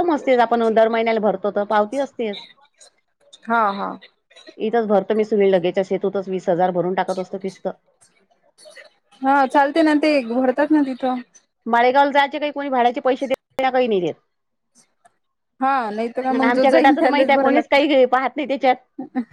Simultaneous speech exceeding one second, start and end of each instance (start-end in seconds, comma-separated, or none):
16.4-17.8